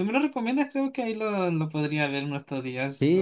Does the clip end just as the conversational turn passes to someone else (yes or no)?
yes